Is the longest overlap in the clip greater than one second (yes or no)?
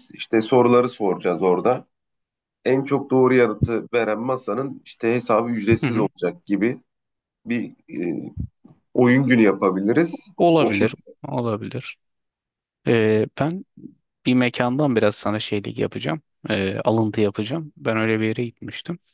no